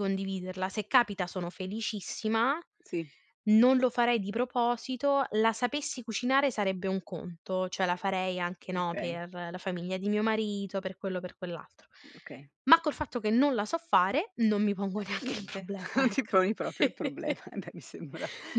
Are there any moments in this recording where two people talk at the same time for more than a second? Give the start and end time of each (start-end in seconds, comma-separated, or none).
15.0-16.4